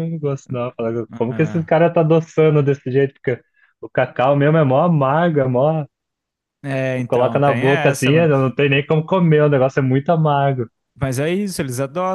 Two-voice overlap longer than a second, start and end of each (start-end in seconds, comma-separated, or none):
7.1-8.3